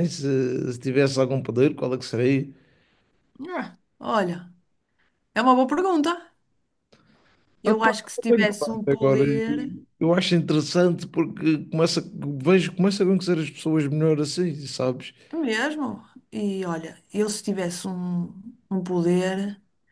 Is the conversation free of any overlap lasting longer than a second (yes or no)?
no